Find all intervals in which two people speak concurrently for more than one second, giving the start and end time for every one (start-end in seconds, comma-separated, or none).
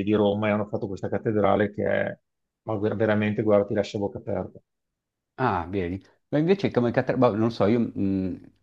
none